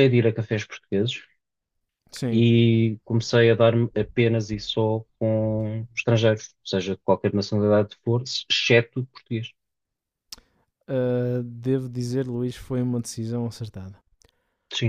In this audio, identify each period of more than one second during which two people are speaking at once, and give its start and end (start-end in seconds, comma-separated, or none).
none